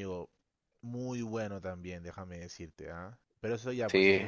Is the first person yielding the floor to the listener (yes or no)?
no